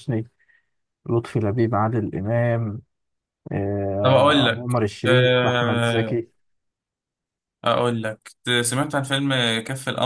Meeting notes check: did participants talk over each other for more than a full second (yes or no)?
yes